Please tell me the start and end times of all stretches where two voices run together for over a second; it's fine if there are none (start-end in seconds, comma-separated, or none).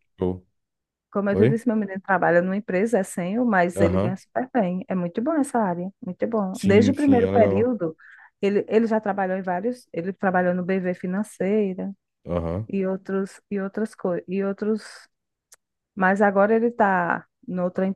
6.5-7.8